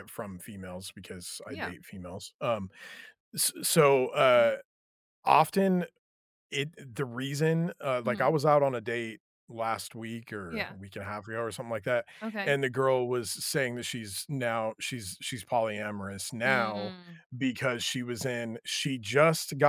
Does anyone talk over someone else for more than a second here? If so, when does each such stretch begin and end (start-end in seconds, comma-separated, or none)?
none